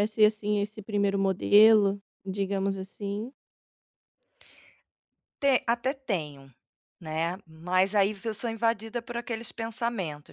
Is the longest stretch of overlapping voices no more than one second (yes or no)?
yes